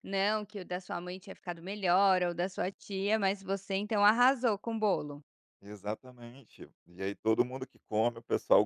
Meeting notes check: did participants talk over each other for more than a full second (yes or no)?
no